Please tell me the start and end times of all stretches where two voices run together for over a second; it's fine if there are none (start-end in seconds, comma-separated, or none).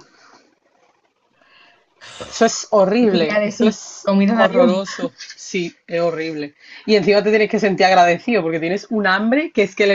3.0-4.8